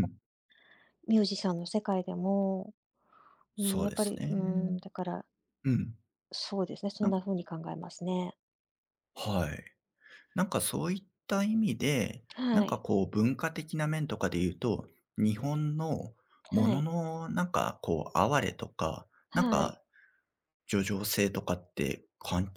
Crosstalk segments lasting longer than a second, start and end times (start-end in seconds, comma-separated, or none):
3.6-4.8